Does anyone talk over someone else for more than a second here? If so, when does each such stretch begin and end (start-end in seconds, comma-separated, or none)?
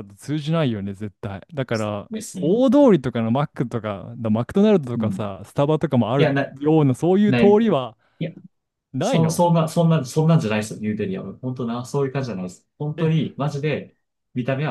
none